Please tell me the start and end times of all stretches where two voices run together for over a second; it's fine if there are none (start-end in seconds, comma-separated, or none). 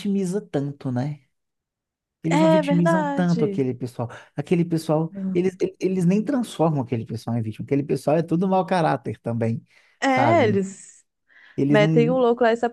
2.3-3.7